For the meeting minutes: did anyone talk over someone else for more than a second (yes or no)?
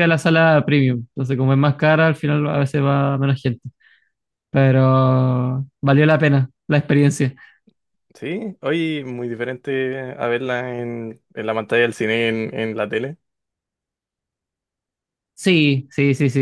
no